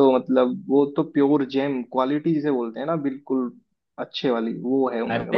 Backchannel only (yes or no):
no